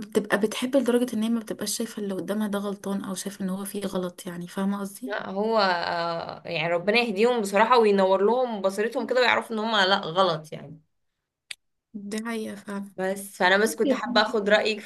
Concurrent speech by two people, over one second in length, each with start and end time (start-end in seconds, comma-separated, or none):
none